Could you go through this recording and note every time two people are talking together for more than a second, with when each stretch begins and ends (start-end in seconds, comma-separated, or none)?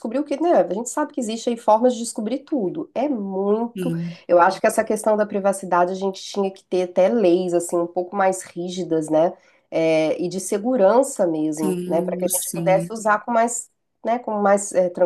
11.6-12.9